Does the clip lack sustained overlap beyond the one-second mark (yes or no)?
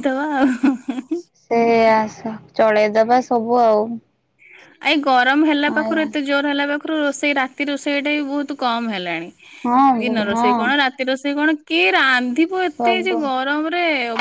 yes